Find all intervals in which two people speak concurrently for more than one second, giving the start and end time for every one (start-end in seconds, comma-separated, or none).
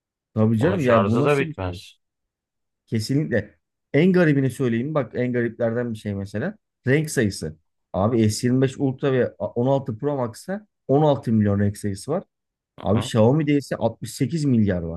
0.6-1.8